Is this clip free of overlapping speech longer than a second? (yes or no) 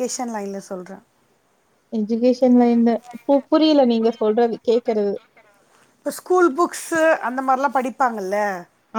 yes